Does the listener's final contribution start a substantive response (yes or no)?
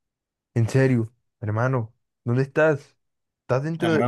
yes